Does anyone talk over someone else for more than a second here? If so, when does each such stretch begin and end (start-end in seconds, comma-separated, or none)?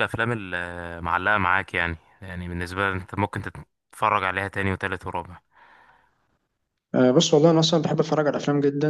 none